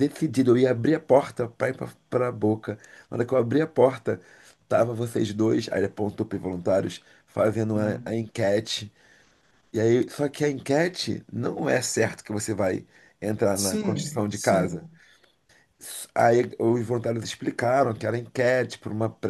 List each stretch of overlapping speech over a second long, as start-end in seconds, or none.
13.5-14.9